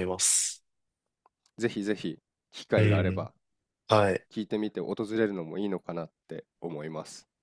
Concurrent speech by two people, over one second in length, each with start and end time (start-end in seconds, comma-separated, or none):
none